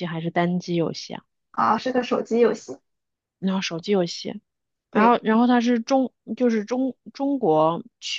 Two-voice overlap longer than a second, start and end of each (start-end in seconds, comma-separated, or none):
none